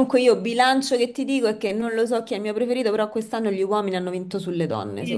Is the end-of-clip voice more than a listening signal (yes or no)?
yes